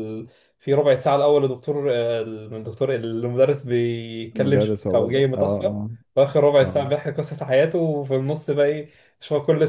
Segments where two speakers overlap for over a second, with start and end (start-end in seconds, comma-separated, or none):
4.4-5.7